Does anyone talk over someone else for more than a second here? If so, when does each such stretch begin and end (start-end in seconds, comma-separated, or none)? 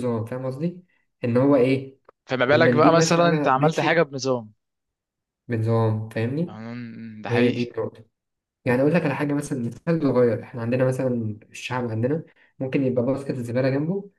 2.5-4.0